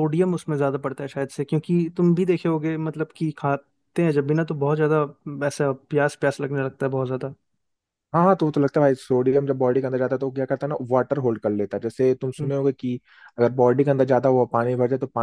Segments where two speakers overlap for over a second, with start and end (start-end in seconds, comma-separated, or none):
none